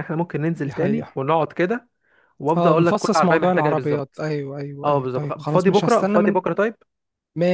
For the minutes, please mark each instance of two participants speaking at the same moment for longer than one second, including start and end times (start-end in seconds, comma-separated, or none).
2.5-4.2, 4.8-6.4